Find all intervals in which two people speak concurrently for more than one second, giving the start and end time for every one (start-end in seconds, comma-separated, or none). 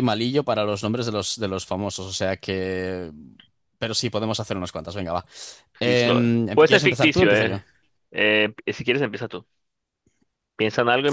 5.8-7.6